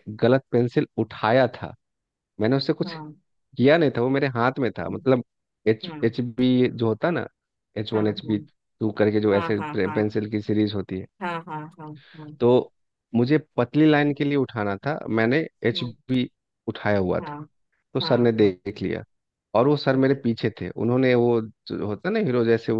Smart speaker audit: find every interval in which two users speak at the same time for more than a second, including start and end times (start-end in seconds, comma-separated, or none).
none